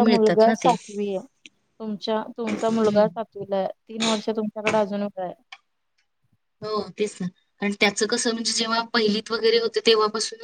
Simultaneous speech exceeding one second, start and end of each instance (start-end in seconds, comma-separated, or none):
none